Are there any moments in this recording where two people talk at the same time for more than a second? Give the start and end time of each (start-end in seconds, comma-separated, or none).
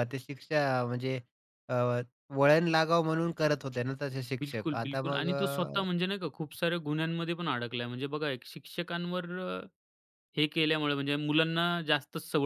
4.4-5.8